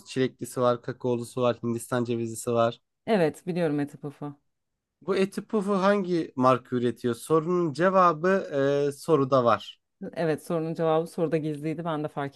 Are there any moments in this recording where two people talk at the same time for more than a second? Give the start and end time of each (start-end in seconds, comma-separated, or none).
none